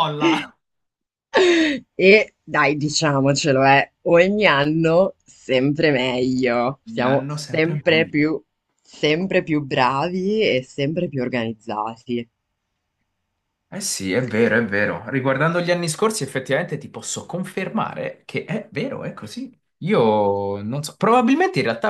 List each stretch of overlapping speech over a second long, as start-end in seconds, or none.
6.9-8.3